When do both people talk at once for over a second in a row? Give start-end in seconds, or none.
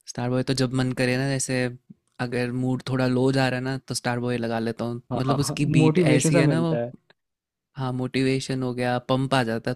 5.1-6.7